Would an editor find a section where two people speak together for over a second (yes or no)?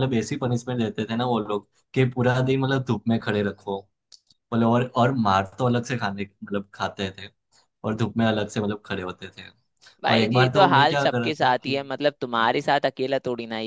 yes